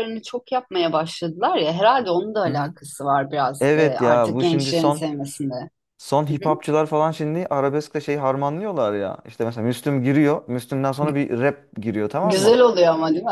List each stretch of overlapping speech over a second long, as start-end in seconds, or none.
3.6-5.0